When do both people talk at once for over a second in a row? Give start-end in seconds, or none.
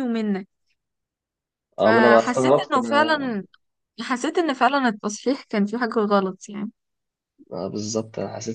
1.8-3.4